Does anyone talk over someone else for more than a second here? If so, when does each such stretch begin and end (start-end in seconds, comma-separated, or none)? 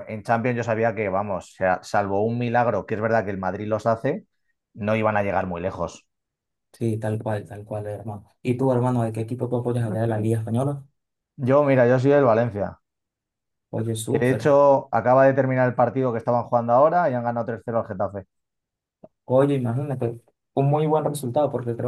none